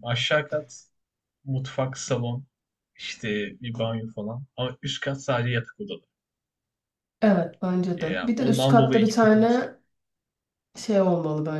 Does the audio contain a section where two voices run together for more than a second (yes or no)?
yes